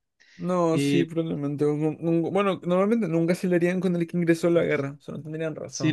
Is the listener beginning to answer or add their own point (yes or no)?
yes